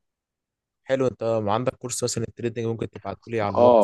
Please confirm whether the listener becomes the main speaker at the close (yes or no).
yes